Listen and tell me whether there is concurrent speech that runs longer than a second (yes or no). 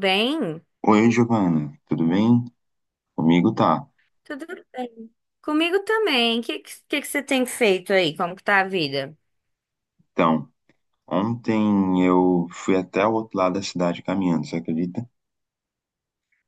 no